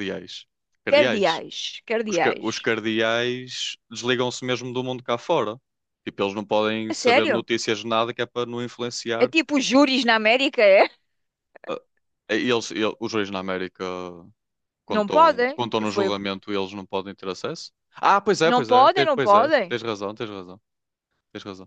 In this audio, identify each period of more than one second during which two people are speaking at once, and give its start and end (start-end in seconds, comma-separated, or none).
14.9-16.2, 18.4-19.8